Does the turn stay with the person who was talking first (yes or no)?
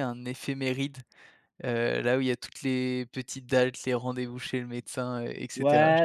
no